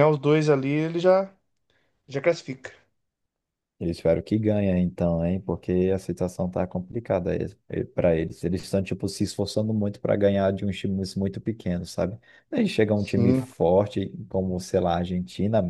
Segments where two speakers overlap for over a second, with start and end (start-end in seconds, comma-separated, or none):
none